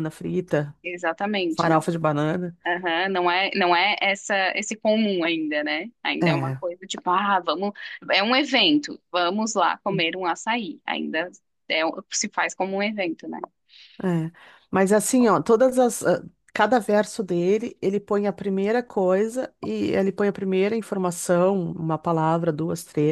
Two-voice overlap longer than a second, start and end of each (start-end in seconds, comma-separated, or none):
none